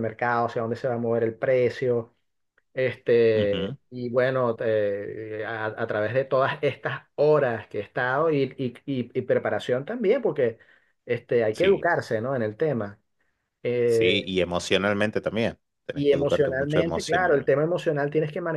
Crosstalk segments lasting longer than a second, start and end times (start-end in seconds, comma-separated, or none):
15.9-17.6